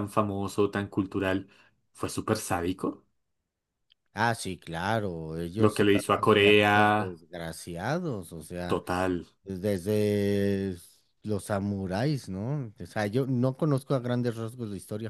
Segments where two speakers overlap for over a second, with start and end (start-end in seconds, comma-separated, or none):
5.6-7.2